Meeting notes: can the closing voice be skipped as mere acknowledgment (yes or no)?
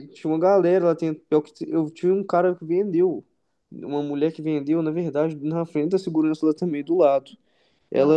yes